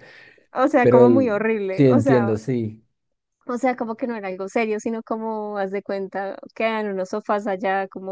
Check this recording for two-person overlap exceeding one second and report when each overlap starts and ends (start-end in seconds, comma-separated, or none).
0.8-2.3